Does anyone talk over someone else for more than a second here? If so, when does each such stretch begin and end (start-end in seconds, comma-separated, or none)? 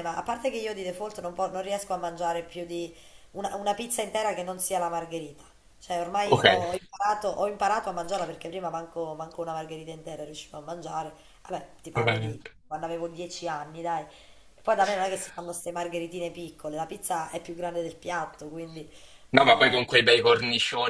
none